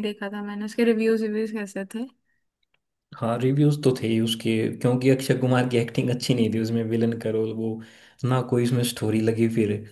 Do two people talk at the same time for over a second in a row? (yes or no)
no